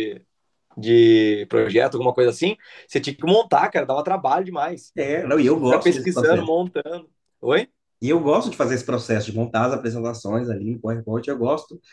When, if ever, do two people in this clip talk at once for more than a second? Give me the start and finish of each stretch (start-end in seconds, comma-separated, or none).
5.3-6.5